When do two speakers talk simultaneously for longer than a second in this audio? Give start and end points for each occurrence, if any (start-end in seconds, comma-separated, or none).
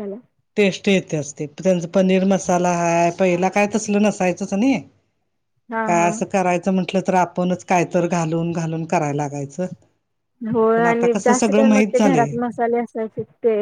10.7-12.3